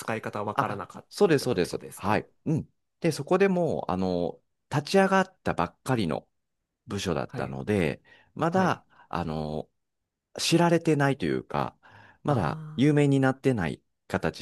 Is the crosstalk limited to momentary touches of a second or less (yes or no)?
no